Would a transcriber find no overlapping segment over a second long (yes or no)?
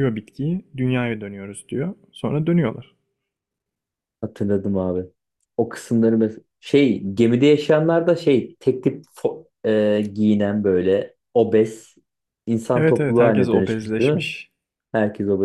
no